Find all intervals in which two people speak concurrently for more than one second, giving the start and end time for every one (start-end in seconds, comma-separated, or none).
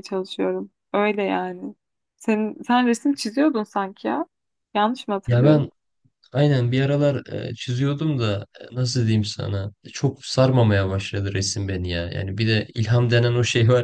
none